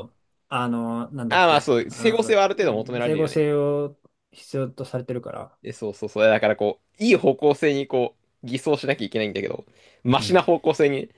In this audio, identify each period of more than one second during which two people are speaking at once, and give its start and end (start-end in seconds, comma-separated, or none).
1.3-3.5